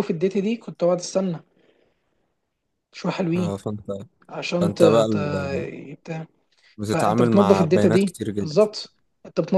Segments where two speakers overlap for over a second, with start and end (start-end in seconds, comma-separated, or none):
6.9-8.6